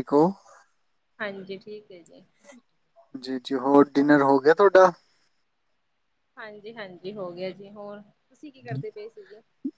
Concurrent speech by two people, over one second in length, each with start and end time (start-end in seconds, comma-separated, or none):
none